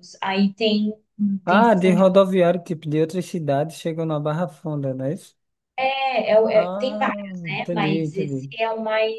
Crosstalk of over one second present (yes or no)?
yes